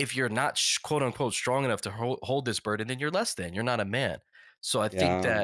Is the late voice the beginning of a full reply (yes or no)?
no